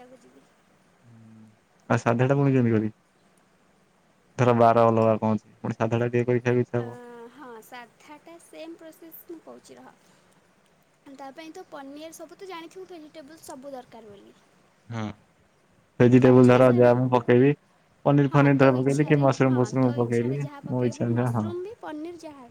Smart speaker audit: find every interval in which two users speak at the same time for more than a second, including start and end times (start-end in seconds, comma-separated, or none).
18.3-21.4